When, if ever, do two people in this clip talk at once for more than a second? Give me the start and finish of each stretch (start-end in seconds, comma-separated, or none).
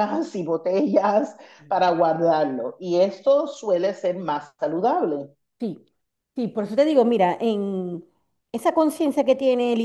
none